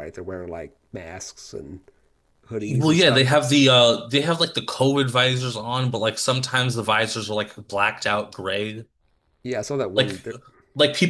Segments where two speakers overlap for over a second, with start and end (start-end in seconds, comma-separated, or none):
none